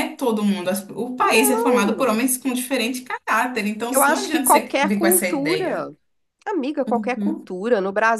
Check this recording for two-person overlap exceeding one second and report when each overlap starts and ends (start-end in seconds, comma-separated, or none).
3.9-5.9